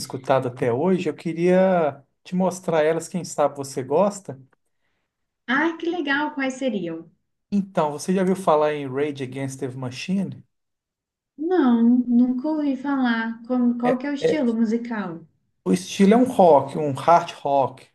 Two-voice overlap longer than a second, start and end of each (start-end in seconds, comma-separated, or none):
none